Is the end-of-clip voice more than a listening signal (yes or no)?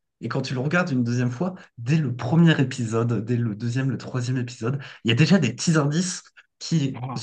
no